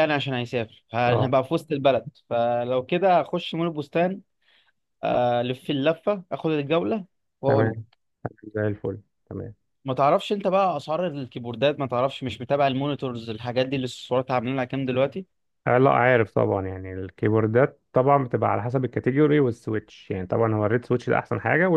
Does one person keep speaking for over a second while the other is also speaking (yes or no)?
no